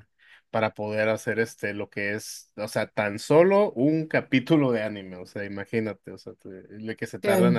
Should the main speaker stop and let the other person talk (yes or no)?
no